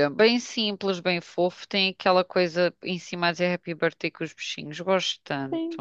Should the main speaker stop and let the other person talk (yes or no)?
yes